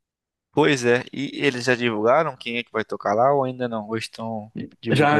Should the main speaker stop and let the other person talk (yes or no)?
yes